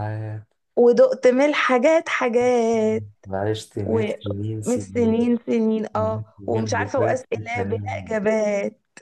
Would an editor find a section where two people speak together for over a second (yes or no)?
yes